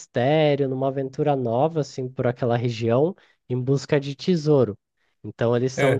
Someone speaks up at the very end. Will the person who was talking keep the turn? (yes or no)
yes